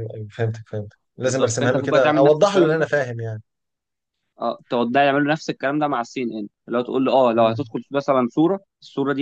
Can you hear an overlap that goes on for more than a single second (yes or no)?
yes